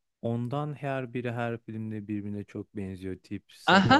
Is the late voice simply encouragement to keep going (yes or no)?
no